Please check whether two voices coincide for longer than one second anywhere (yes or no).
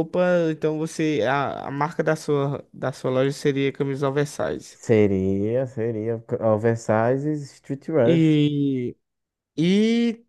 no